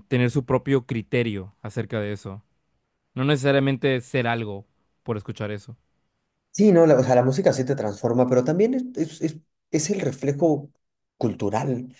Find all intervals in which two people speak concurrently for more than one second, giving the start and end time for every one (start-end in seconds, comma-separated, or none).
none